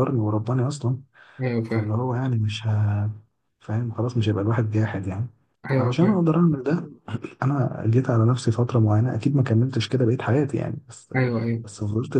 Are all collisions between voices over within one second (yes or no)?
yes